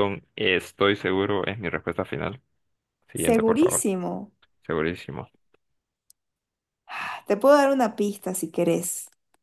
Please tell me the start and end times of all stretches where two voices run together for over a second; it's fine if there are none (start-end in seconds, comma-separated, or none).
none